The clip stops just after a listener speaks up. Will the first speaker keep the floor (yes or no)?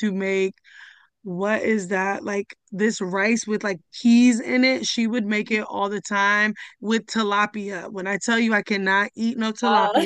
yes